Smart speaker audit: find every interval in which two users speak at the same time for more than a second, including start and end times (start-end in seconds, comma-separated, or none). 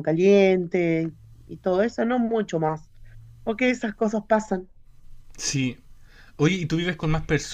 none